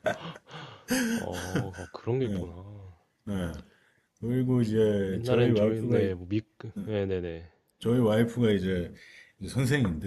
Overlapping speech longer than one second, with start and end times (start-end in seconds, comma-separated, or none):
4.6-6.2